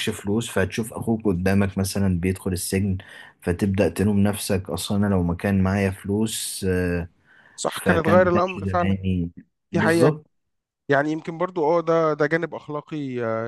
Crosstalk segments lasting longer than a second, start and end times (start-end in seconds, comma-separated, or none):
7.7-8.9